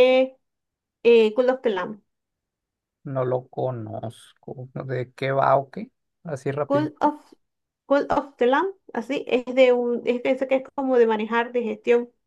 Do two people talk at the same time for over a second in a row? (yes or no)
no